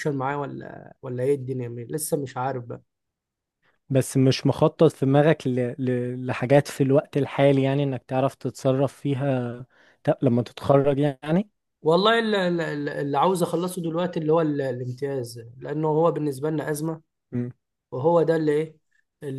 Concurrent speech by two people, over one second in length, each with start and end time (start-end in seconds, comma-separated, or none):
none